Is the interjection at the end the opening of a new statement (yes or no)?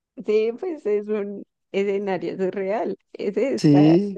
yes